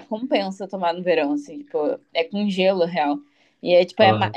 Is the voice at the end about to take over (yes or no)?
no